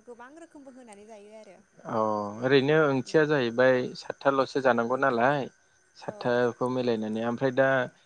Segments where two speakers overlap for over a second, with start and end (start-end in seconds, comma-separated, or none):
none